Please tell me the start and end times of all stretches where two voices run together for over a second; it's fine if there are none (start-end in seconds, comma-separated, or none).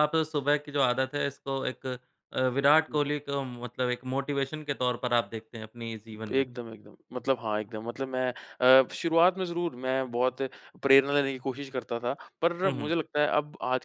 none